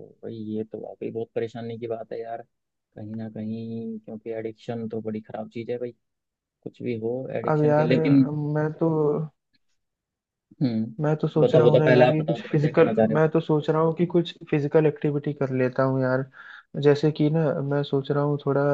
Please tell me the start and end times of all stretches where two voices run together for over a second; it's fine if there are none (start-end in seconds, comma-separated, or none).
11.0-13.2